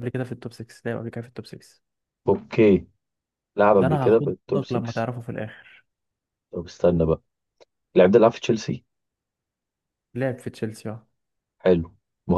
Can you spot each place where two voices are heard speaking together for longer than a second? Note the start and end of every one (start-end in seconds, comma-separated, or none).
3.8-5.0